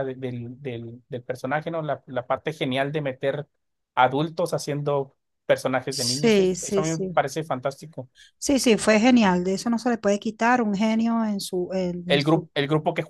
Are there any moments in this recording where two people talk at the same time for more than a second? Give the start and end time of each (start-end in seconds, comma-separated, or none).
5.9-7.2